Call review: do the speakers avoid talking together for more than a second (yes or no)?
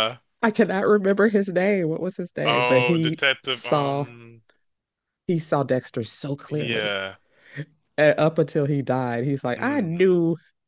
no